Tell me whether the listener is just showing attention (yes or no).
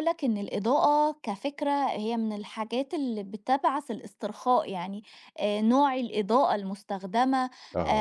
yes